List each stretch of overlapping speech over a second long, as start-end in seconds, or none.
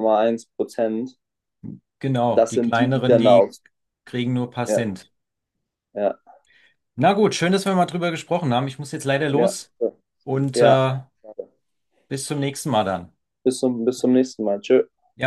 2.3-3.5